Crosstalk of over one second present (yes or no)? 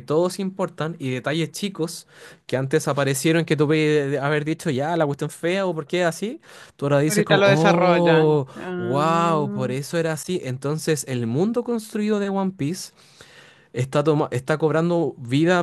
yes